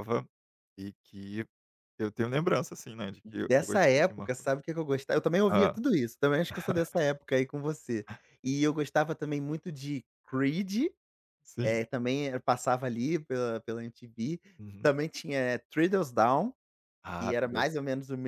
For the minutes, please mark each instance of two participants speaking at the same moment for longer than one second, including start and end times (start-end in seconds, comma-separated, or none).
3.2-4.5